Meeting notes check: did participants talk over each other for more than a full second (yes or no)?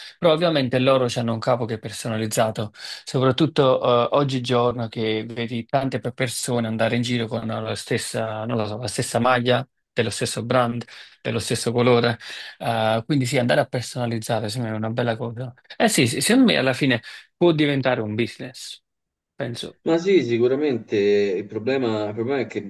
no